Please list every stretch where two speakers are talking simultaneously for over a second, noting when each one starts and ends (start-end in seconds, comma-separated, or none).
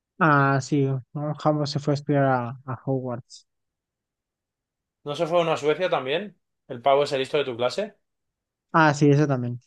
none